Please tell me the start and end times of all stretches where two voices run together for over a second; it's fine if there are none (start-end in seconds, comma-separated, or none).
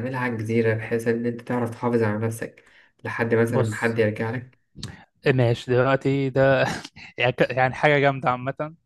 none